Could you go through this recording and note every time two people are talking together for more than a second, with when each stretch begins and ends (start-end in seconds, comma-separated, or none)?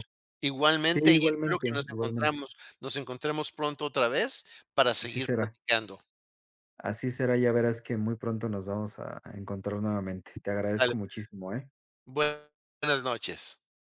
0.8-2.4